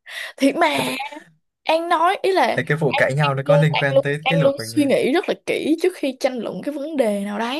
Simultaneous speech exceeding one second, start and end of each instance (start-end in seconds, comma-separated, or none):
2.9-4.9